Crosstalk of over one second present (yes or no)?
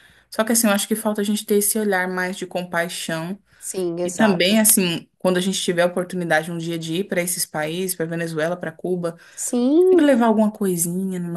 no